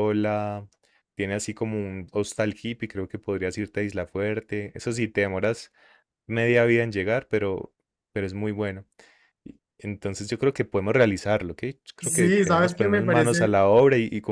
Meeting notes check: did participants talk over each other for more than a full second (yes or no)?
yes